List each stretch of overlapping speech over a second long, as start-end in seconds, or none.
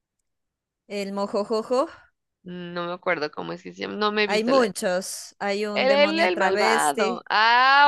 5.7-7.2